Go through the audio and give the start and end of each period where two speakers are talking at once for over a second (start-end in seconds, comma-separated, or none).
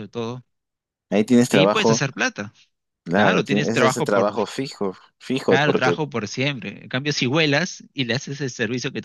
3.1-4.4